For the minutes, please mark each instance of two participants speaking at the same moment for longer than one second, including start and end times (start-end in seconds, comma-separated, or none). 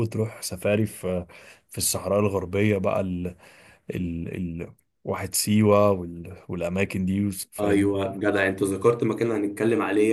none